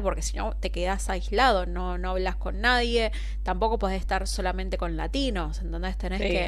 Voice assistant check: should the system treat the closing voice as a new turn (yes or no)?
no